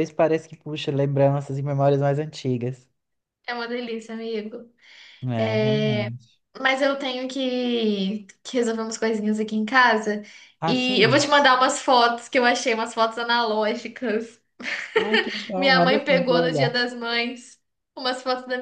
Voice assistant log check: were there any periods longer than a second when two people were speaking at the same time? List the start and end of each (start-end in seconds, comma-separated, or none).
15.6-16.8